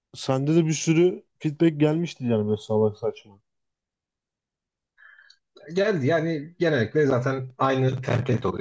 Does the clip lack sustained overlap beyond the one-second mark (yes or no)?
yes